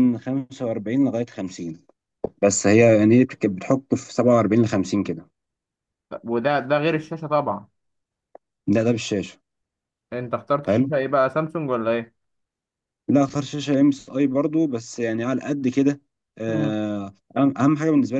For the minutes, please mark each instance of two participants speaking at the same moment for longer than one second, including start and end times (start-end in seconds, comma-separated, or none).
none